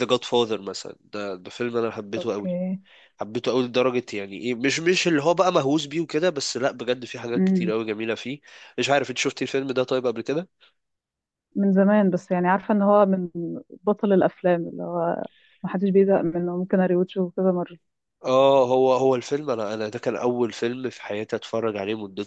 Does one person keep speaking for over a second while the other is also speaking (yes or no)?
no